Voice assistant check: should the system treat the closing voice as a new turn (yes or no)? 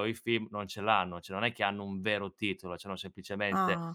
no